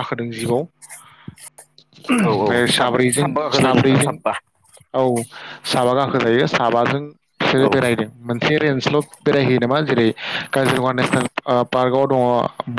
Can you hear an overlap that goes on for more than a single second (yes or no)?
yes